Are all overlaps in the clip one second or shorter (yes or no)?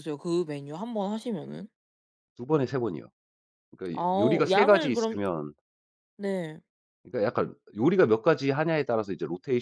no